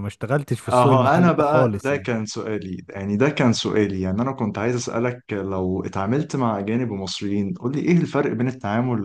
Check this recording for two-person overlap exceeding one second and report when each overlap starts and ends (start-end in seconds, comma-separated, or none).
0.7-2.1